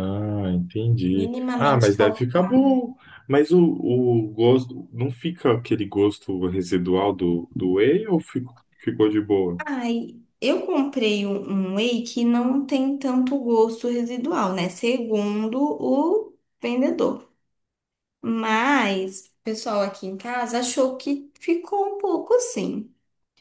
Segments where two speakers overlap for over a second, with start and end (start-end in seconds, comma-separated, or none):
1.1-2.6